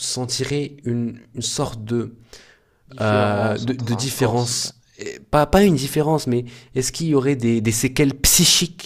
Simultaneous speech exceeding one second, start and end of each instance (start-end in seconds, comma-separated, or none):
3.0-4.7